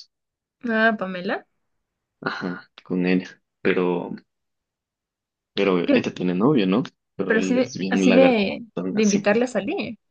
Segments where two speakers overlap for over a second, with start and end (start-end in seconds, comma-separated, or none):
7.3-9.3